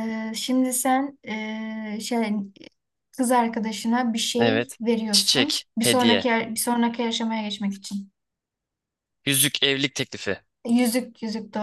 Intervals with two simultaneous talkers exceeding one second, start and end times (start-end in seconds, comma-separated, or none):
4.4-6.3